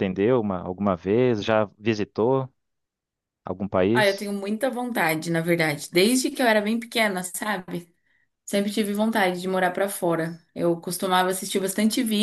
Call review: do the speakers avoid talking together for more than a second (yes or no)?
yes